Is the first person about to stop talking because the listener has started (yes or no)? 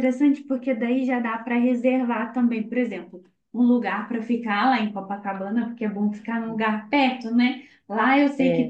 no